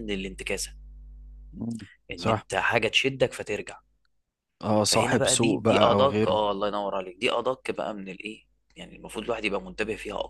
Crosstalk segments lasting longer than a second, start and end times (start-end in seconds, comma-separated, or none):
4.8-6.4